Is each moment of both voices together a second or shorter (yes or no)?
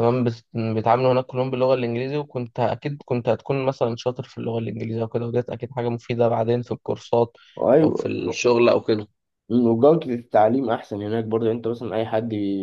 yes